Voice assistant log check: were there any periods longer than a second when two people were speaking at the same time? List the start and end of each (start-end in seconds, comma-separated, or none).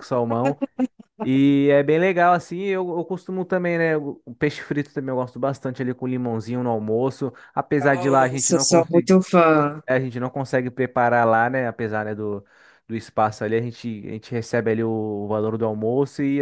7.8-9.1